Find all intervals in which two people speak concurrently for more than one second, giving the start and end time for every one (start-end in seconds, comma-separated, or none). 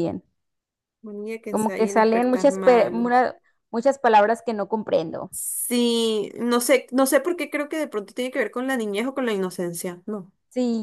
1.5-3.2